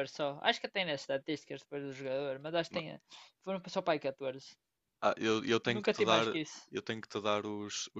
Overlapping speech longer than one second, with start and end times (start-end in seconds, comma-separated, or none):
none